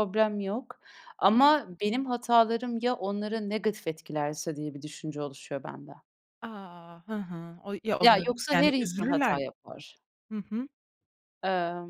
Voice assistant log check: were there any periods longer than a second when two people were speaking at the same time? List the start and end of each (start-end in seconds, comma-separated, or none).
8.0-9.8